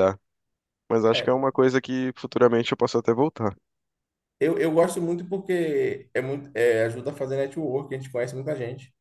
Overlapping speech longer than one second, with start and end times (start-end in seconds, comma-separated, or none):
none